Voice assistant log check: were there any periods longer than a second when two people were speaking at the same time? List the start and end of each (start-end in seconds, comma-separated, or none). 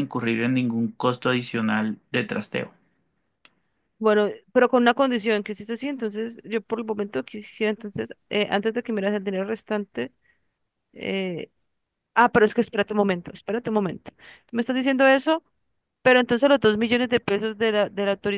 none